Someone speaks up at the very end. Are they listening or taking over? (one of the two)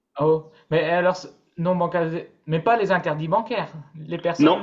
taking over